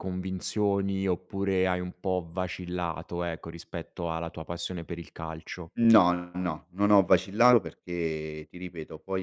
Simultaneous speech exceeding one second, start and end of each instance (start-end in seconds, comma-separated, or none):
none